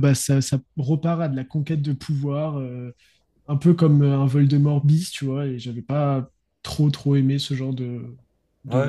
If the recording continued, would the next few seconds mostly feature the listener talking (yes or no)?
yes